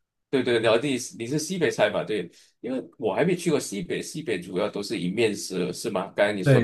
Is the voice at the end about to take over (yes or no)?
yes